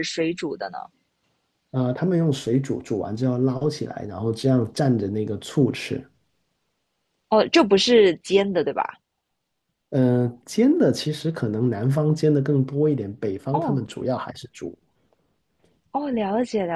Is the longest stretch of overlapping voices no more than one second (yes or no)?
yes